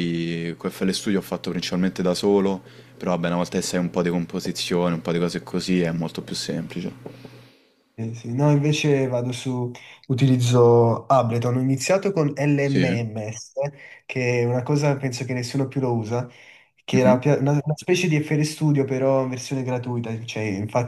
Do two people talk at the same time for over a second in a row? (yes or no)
no